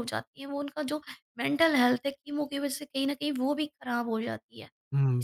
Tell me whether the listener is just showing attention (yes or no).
no